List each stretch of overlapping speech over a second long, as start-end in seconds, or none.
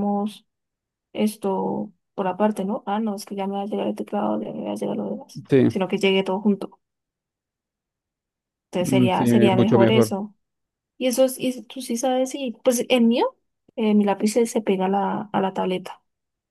8.8-10.1